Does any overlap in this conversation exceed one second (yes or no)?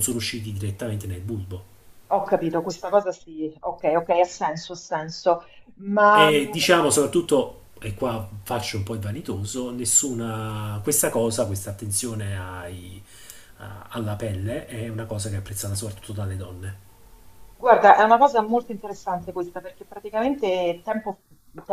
no